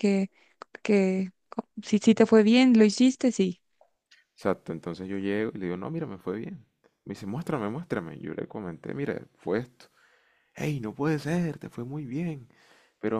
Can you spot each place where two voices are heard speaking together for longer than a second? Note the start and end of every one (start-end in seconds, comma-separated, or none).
none